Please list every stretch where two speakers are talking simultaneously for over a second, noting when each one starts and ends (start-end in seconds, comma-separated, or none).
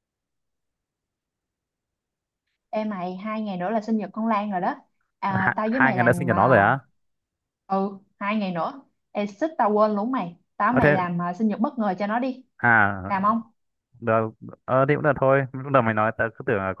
5.3-6.6